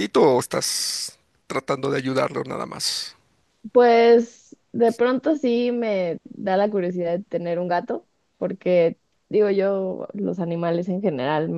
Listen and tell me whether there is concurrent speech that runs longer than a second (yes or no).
no